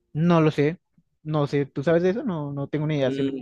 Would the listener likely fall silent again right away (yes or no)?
no